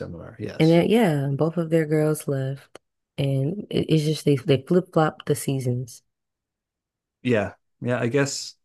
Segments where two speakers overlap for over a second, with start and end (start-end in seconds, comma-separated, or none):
none